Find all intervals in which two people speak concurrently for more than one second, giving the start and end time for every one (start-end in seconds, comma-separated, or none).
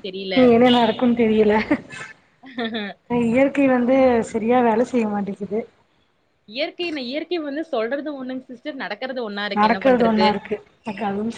none